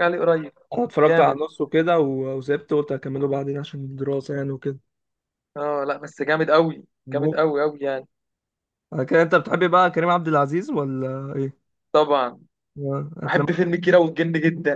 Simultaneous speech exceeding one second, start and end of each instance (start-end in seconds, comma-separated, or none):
none